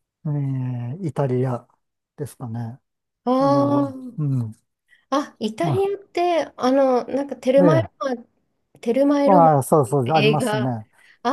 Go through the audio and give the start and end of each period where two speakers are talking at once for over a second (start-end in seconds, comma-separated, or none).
9.3-10.8